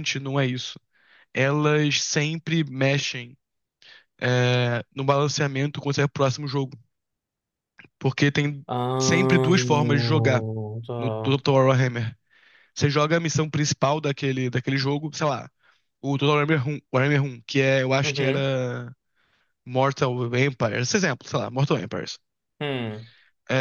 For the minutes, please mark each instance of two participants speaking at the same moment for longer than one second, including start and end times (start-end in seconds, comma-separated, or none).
none